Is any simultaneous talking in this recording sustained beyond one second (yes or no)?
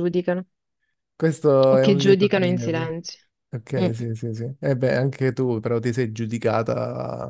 yes